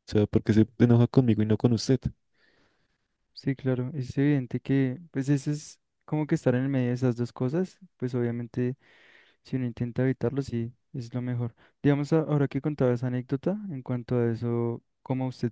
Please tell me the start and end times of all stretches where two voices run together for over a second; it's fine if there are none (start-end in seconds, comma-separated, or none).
none